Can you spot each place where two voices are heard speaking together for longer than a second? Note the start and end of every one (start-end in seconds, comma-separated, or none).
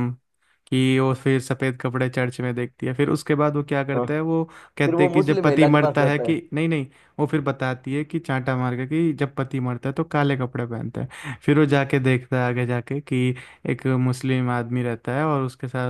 4.8-6.3